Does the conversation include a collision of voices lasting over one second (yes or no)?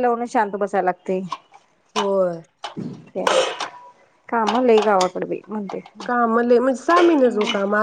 no